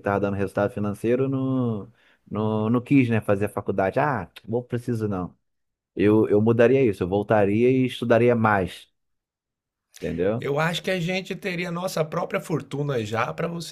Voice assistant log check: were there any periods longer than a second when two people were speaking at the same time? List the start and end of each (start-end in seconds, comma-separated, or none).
none